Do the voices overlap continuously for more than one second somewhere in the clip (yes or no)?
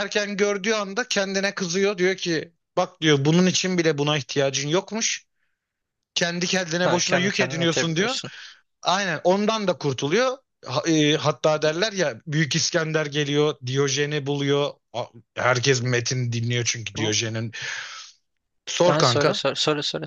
yes